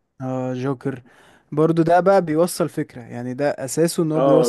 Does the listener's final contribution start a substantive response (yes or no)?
yes